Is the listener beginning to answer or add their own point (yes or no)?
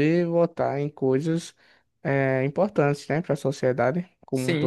yes